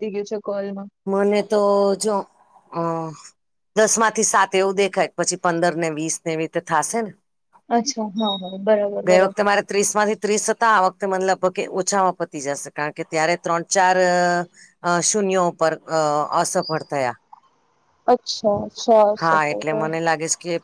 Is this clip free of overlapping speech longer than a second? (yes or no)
yes